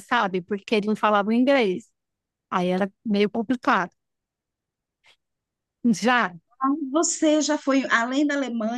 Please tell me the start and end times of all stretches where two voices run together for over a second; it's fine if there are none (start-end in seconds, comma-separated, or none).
none